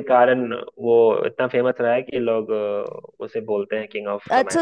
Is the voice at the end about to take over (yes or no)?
yes